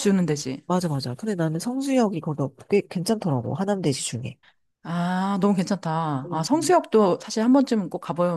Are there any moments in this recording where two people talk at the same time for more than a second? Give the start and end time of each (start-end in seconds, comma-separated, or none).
none